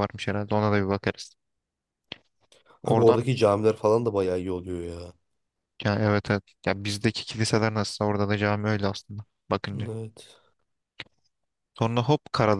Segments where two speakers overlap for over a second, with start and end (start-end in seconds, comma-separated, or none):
none